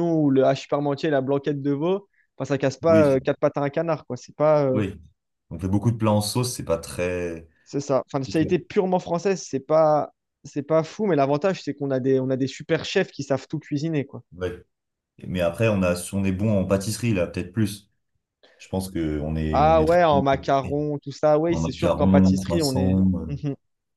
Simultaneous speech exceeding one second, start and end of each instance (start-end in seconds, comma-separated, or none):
19.5-20.8, 21.5-23.2